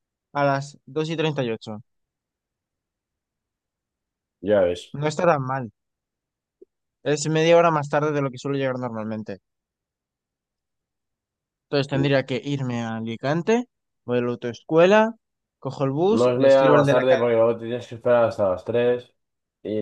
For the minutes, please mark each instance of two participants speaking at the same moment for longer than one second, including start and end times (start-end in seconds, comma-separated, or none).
16.2-17.4